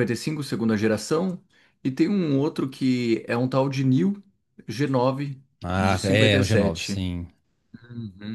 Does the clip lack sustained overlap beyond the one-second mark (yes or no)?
no